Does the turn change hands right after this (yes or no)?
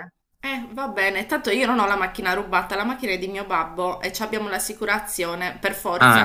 yes